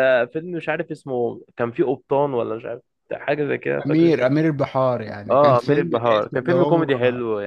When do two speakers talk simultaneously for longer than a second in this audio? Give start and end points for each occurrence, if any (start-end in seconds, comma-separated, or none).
5.3-6.9